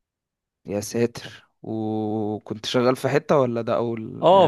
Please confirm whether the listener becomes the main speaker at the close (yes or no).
yes